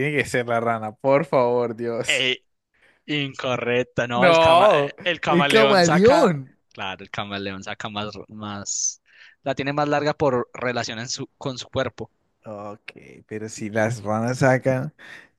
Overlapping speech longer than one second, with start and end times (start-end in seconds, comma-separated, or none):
4.2-6.6